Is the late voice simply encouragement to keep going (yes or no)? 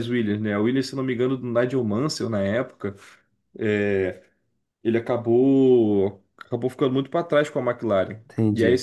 yes